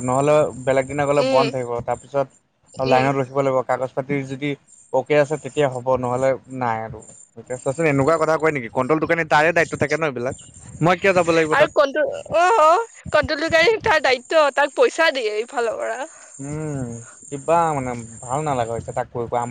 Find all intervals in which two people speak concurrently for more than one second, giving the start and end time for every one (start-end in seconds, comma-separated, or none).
none